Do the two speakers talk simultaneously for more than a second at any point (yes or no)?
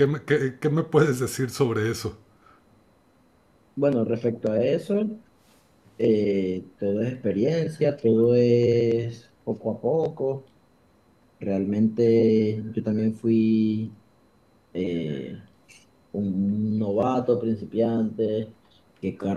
no